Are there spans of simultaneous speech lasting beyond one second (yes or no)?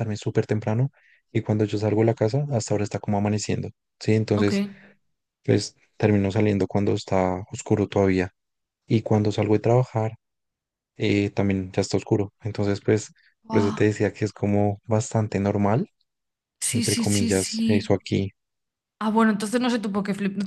yes